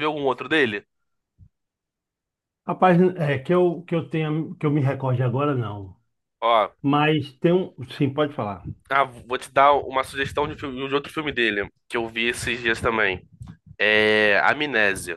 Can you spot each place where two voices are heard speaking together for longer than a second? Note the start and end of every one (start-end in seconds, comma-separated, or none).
none